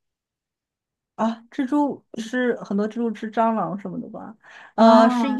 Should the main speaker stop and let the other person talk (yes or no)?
no